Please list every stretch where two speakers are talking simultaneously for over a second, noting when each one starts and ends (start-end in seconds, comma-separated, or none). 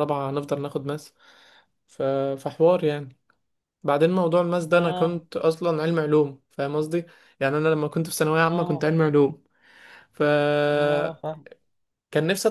none